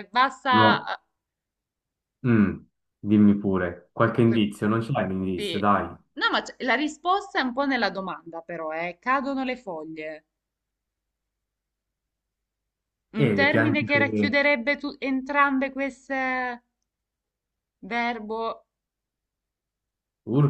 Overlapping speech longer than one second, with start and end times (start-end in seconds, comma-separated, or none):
13.1-14.4